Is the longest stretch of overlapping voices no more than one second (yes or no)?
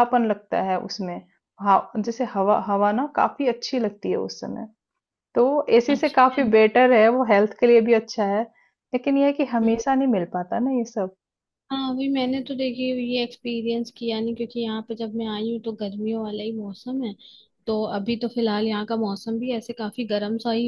yes